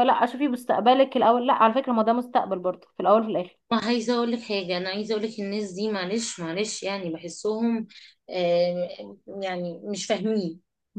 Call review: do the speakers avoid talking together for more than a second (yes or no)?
yes